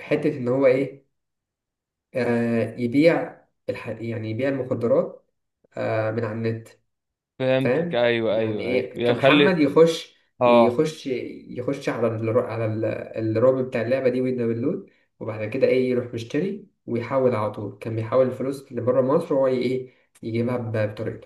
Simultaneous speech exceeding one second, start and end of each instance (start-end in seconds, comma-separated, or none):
7.6-9.6